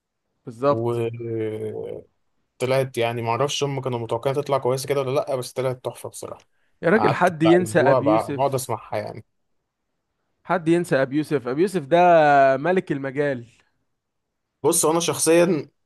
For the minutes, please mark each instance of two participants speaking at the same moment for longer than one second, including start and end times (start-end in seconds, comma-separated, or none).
6.9-8.7